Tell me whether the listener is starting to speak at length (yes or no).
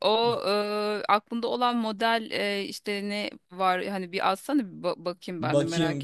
yes